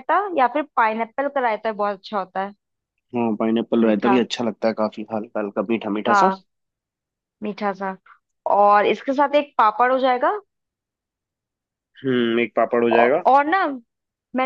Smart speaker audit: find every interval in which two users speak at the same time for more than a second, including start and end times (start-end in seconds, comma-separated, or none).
none